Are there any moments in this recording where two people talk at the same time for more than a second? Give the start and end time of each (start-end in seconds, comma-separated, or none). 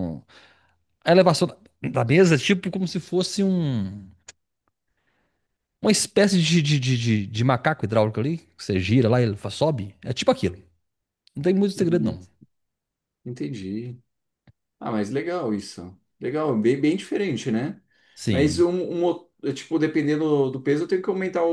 none